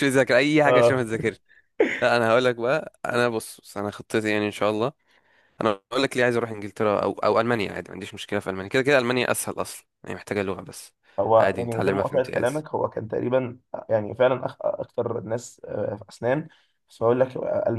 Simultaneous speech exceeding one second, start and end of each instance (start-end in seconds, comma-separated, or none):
11.4-12.6